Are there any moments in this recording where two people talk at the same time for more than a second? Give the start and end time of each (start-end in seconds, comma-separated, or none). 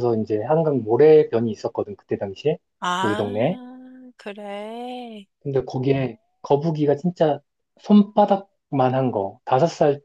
none